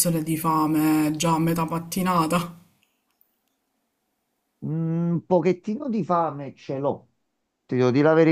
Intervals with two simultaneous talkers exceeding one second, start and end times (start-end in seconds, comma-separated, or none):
none